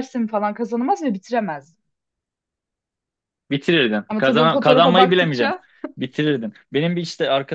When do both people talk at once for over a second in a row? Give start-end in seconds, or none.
4.1-5.5